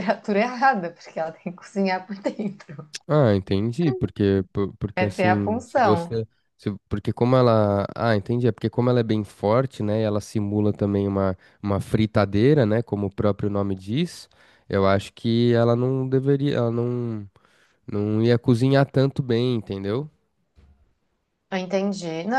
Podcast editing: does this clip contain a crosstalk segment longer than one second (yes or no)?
yes